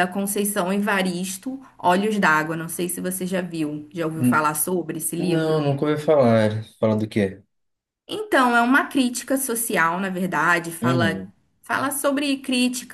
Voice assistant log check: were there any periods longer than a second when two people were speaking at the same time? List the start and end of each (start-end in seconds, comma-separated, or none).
none